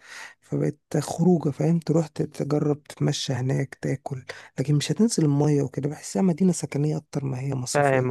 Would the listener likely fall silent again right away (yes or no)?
no